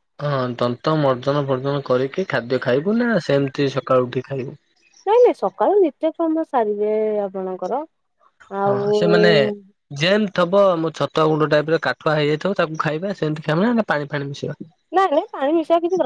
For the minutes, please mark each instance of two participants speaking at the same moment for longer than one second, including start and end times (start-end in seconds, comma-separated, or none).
none